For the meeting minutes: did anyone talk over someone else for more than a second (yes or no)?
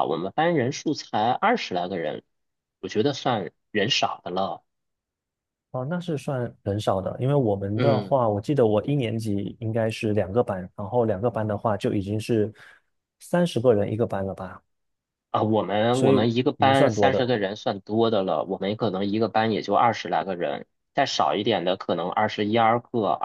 yes